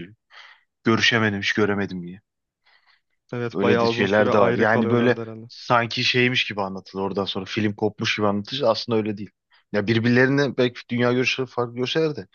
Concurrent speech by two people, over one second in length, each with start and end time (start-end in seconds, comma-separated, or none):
3.5-5.5